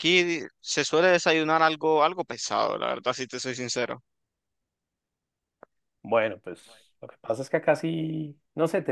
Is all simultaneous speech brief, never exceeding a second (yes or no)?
yes